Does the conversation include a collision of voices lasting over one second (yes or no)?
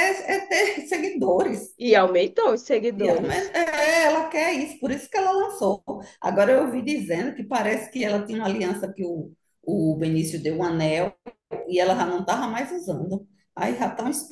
no